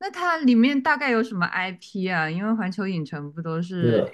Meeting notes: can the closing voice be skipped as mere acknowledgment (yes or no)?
no